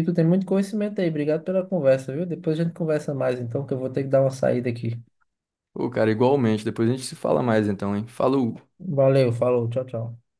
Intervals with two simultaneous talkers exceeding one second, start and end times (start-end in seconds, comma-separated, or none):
none